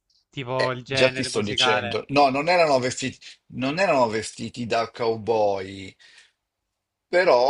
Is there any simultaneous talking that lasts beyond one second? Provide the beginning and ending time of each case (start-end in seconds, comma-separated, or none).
0.6-2.0